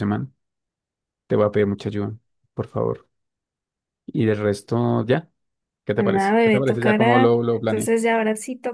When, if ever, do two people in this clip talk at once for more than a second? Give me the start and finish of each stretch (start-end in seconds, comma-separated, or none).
5.9-7.9